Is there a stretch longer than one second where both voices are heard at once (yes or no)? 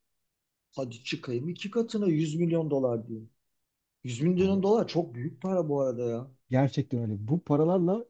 no